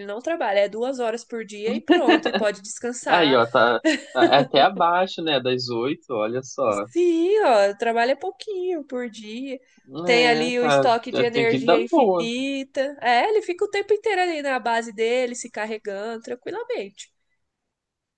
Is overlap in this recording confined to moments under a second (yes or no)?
no